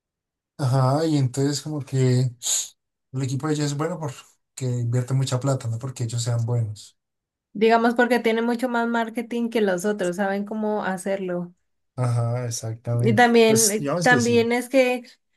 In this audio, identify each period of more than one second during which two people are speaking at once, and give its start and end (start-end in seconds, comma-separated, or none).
12.9-14.5